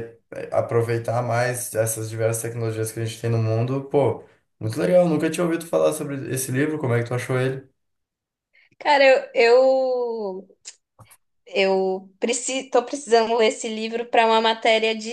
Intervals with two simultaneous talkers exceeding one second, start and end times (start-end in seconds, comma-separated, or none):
none